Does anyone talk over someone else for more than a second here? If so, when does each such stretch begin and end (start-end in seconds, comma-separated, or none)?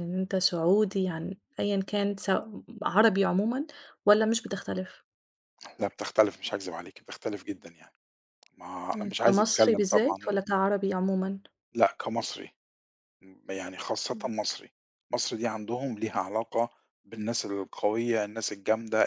8.9-10.4